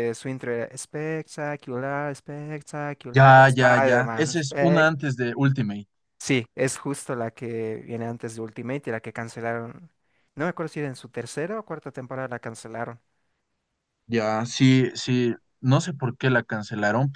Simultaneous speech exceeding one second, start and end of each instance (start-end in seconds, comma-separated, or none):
3.1-4.9